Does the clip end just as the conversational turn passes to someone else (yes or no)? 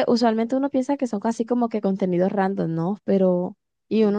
no